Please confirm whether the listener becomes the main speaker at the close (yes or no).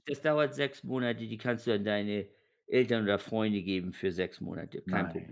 yes